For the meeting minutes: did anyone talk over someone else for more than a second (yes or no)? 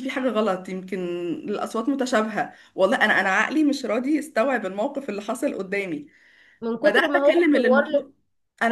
yes